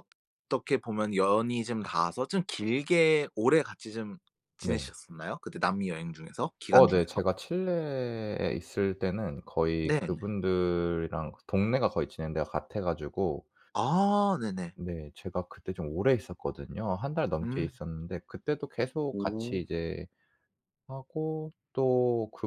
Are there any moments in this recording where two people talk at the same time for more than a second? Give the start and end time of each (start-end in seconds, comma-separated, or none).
none